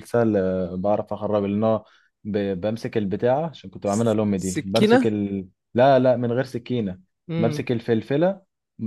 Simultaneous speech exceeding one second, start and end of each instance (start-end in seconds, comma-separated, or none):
3.8-5.1